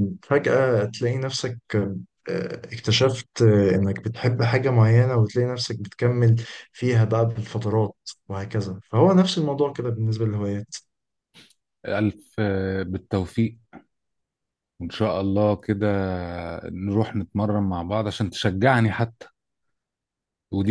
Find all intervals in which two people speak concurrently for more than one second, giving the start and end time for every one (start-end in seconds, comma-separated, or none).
none